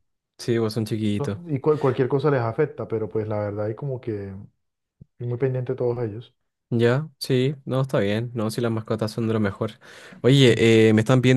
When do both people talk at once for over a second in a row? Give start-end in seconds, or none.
none